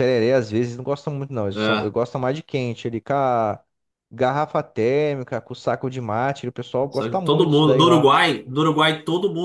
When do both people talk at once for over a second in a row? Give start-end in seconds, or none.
6.9-8.1